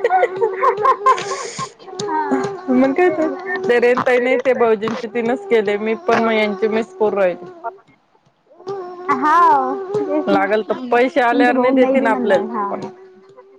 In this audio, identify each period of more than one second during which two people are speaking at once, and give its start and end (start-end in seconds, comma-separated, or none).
10.3-12.7